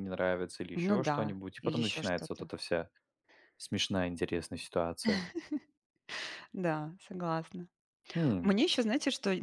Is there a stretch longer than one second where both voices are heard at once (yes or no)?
yes